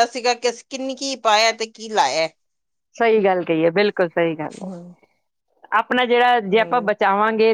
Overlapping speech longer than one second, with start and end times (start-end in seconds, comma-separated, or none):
none